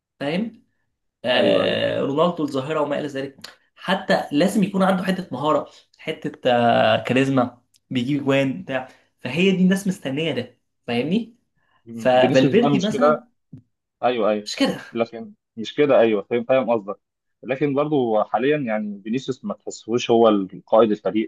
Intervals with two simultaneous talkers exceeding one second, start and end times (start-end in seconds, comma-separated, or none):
11.9-13.2